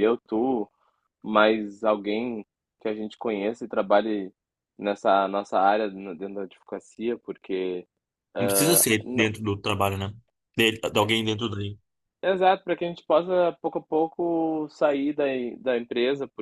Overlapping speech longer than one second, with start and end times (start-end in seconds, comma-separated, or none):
none